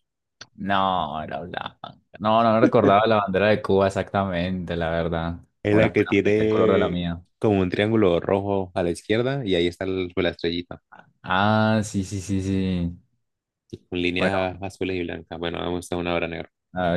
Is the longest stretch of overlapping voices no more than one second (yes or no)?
no